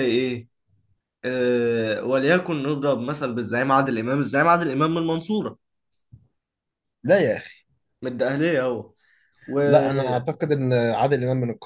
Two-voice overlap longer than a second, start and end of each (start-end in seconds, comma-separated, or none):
none